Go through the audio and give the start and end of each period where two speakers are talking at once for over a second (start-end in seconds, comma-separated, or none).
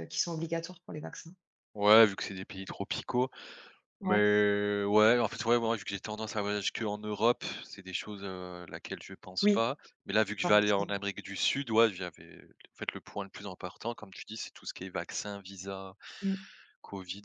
none